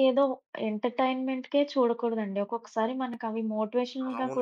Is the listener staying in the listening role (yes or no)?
no